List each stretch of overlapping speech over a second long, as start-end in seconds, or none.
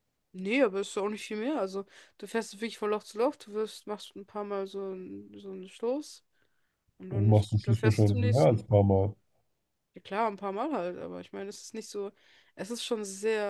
7.1-8.6